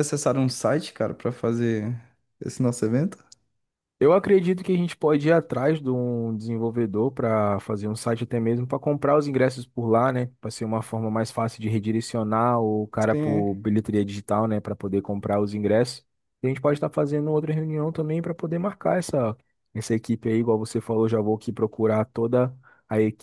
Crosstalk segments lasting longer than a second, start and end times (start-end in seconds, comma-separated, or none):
none